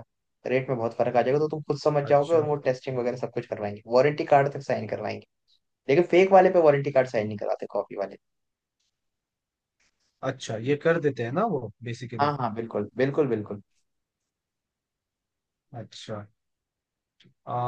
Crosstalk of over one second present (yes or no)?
no